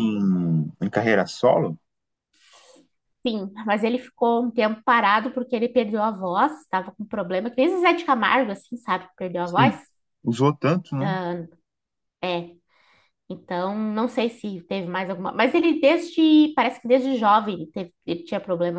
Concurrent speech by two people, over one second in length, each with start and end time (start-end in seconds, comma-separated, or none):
none